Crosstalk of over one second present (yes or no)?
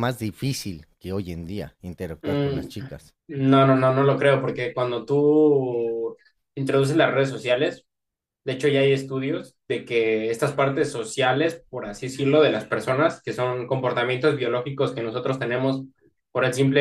no